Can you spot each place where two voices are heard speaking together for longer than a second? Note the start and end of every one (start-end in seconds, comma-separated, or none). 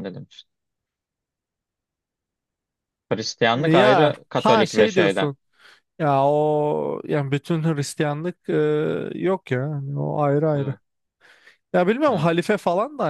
3.5-5.3